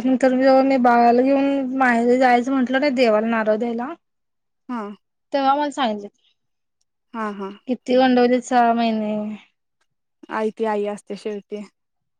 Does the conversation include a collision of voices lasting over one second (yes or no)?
no